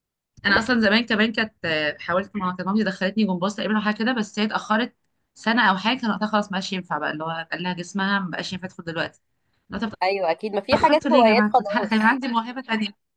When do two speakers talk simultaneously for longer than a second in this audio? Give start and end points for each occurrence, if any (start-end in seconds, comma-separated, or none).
10.7-12.2